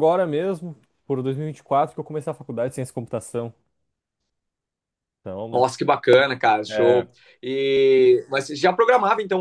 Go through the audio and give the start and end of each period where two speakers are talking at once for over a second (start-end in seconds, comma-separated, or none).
none